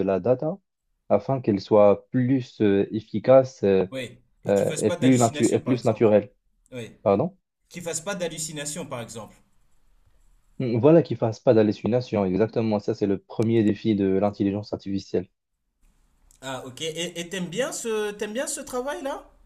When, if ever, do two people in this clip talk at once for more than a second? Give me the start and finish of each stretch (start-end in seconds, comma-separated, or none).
4.5-6.1